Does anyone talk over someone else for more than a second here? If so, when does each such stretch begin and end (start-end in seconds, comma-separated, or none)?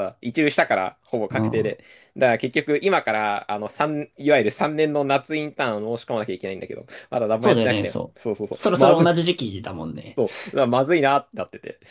7.4-9.1